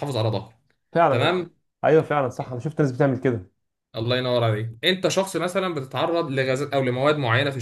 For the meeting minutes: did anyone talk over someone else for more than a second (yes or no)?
no